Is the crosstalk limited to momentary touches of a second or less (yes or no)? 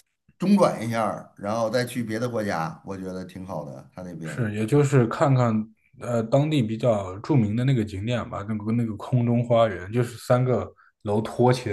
yes